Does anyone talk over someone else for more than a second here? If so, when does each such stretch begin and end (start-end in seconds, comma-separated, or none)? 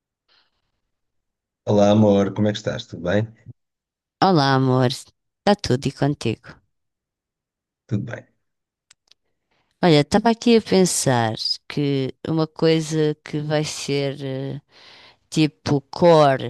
none